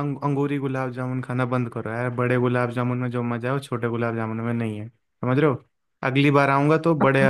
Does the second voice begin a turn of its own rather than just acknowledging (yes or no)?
yes